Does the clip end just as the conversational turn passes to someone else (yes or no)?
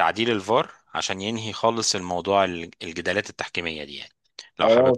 yes